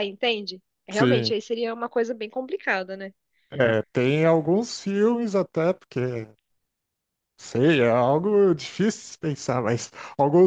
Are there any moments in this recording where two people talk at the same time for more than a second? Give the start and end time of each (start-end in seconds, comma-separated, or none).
none